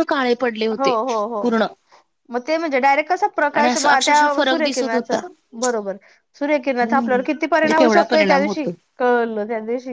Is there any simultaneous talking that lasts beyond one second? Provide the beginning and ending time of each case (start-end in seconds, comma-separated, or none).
3.6-5.2, 6.7-8.7